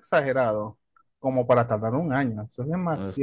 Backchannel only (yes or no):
no